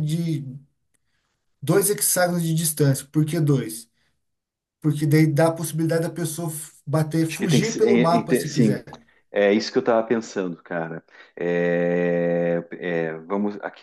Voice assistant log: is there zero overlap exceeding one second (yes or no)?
no